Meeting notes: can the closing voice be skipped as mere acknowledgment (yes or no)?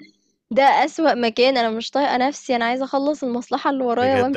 no